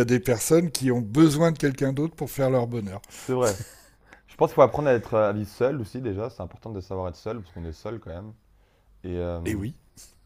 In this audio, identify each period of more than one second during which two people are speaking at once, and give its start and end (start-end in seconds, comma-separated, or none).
none